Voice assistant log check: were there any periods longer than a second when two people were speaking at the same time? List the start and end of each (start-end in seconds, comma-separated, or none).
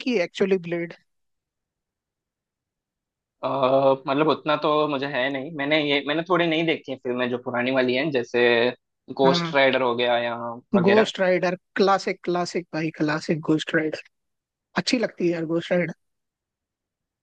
none